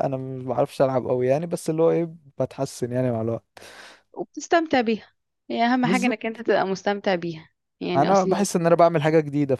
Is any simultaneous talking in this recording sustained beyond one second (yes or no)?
no